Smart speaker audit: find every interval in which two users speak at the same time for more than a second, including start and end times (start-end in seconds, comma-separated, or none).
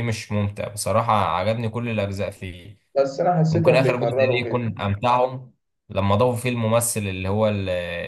3.5-4.8